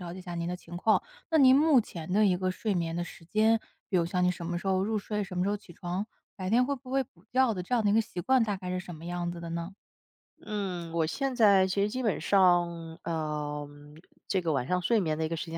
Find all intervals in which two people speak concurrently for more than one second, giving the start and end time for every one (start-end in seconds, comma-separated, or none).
none